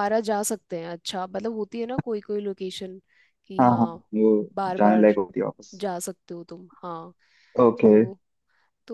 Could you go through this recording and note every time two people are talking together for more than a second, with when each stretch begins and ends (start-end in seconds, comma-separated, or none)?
none